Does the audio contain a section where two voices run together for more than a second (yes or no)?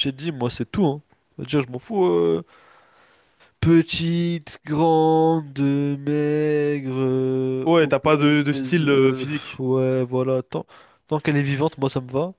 yes